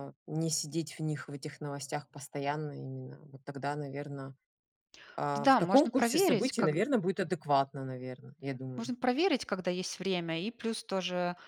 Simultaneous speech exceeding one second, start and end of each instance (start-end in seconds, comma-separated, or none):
5.4-6.8